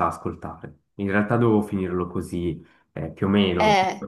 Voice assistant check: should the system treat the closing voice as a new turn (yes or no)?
no